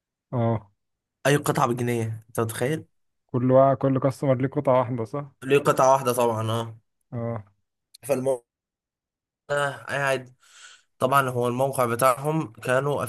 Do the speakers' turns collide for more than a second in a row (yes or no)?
no